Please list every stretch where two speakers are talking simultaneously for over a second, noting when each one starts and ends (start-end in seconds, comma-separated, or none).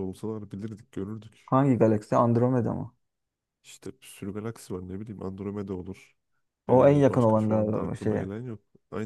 6.7-8.3